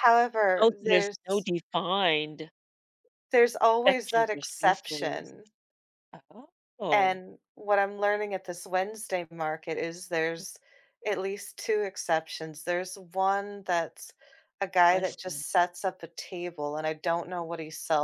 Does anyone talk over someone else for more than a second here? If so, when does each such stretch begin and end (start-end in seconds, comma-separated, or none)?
3.9-5.3